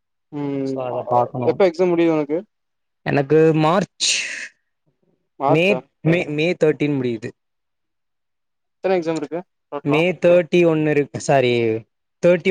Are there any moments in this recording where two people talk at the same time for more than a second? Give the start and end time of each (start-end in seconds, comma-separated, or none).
none